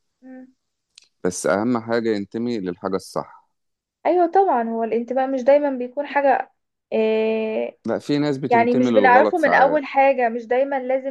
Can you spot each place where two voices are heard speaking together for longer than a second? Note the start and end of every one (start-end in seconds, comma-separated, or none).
8.5-9.8